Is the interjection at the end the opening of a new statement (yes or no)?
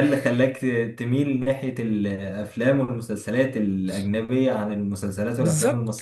yes